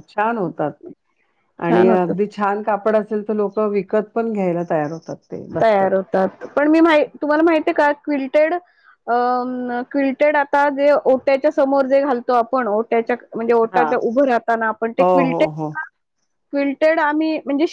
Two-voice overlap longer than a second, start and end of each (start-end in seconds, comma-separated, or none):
none